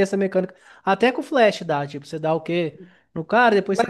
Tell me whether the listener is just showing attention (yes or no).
yes